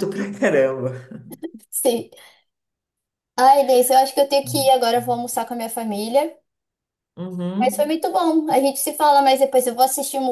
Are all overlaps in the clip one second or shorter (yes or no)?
yes